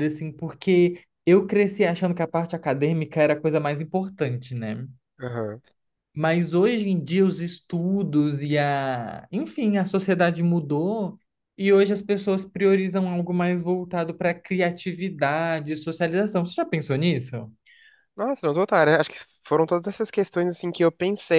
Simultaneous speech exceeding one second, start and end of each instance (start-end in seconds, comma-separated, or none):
none